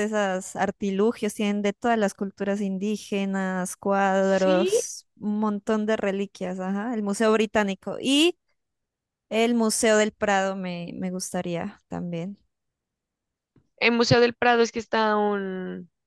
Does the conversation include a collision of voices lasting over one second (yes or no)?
no